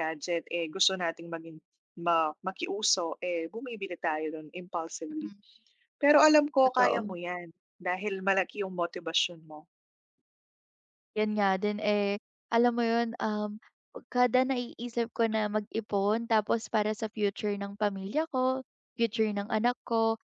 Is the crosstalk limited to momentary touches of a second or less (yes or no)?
yes